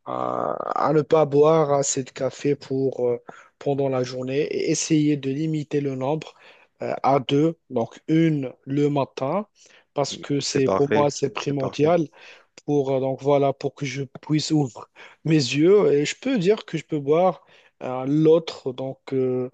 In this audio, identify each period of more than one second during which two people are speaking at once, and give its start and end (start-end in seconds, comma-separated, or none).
10.4-11.9